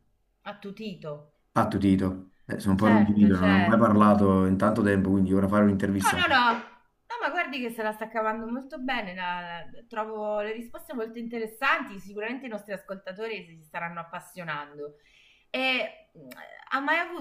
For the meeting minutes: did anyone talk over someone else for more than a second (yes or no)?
yes